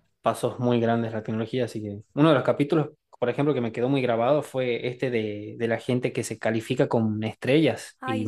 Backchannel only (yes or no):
yes